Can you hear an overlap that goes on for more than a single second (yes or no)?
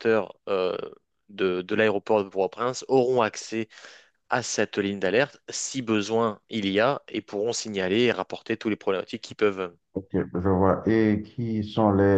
no